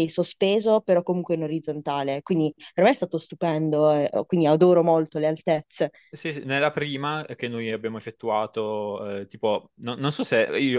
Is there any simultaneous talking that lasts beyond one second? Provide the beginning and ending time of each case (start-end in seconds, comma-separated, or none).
none